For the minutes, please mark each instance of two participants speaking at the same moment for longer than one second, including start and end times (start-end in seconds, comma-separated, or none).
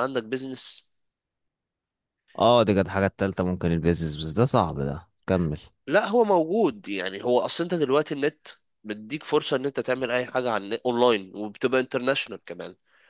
none